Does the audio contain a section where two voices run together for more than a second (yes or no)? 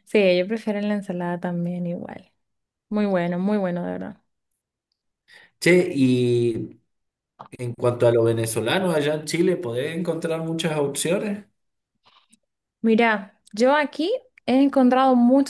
no